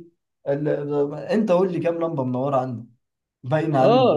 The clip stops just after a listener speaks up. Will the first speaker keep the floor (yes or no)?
no